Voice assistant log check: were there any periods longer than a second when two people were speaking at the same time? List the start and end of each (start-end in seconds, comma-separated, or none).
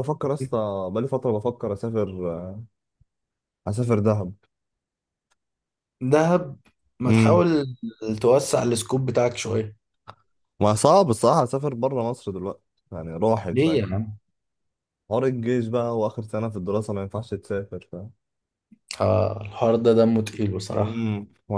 none